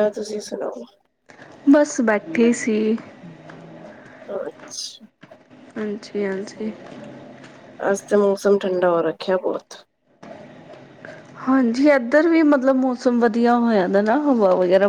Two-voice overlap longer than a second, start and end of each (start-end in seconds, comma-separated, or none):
none